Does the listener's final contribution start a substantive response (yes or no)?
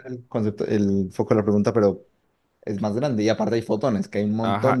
yes